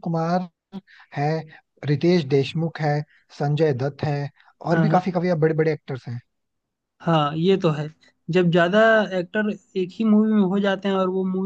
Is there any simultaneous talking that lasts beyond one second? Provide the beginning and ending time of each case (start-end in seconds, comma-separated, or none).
none